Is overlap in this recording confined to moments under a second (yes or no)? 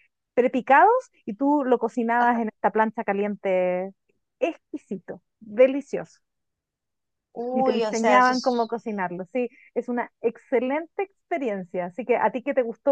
no